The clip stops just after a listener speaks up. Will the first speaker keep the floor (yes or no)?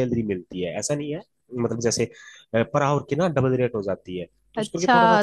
no